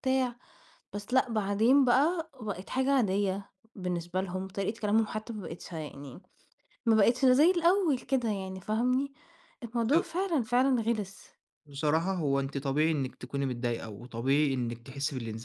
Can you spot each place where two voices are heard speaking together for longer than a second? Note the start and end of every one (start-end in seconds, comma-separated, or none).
none